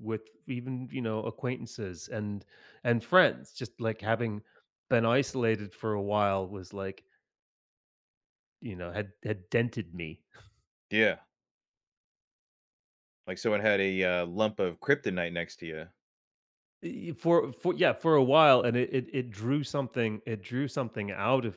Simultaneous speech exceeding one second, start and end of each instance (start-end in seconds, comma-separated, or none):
none